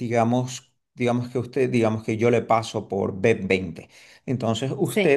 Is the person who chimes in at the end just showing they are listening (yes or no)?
yes